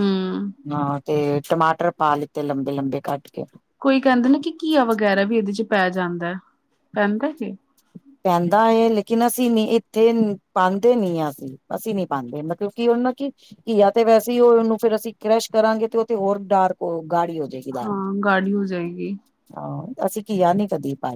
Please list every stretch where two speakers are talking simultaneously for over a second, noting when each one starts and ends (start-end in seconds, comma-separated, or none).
none